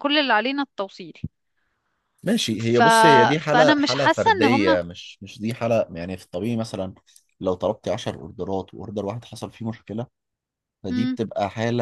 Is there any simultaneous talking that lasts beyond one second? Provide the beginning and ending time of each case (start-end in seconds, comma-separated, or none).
3.5-4.8